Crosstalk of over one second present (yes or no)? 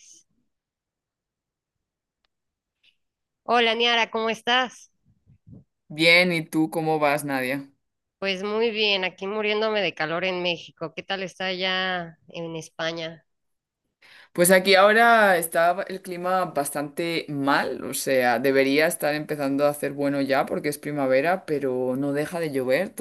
no